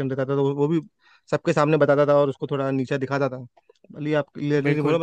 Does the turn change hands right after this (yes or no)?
no